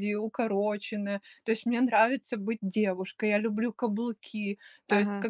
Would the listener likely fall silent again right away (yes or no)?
yes